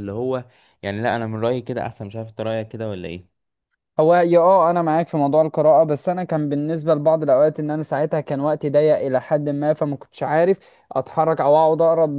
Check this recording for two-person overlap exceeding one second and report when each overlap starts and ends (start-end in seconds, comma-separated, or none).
none